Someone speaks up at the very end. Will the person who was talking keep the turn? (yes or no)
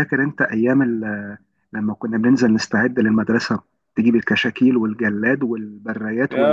no